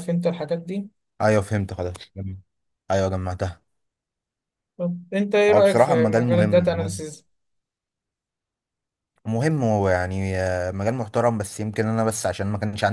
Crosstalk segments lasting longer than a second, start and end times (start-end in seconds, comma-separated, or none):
5.5-7.0